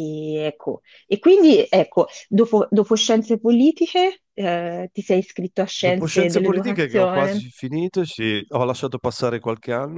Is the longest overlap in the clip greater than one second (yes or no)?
yes